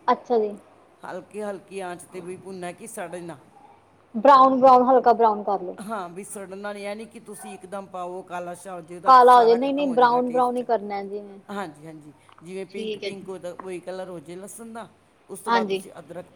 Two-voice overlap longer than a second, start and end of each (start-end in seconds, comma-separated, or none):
9.1-10.6